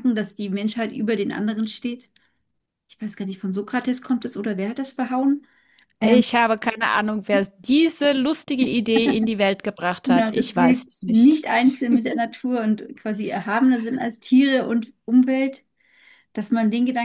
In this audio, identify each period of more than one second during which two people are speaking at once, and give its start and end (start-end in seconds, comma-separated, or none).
10.1-11.4